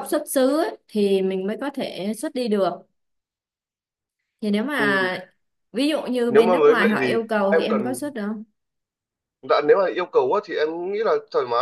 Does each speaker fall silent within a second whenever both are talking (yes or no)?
no